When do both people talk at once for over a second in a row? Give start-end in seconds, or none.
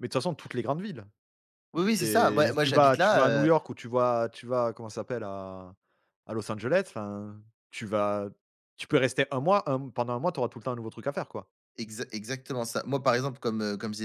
2.0-3.5